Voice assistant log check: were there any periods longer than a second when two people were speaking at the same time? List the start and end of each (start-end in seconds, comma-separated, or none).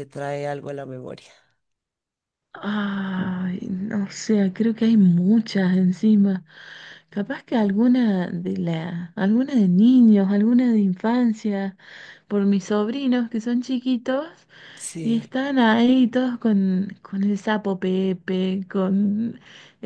none